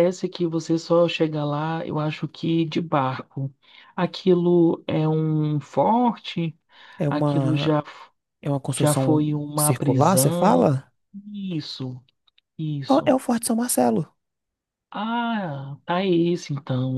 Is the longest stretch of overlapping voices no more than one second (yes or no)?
no